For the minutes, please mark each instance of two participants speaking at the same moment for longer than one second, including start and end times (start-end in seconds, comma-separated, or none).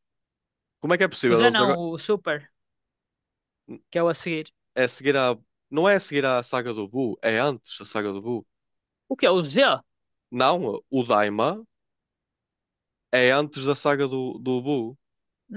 none